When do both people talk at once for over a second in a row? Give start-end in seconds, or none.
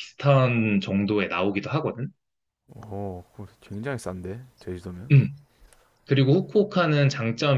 none